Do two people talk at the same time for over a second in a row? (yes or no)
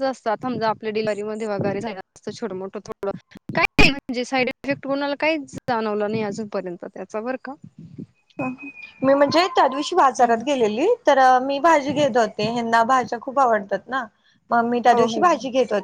no